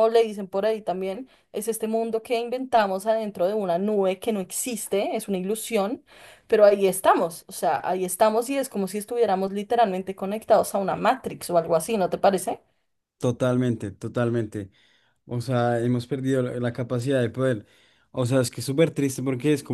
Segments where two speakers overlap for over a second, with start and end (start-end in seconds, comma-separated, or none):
none